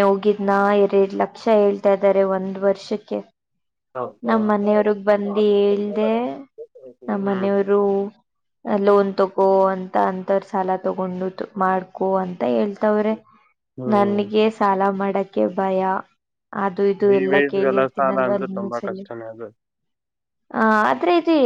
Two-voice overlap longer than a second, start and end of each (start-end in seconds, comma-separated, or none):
17.2-19.0